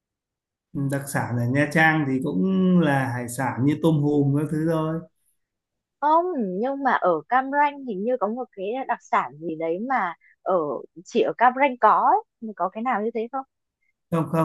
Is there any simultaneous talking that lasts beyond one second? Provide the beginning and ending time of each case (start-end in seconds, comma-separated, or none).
none